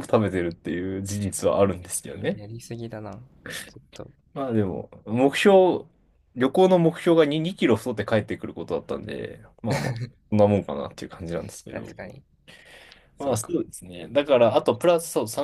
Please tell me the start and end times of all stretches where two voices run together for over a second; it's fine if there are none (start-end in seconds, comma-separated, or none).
none